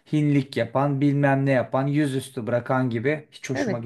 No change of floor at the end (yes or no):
no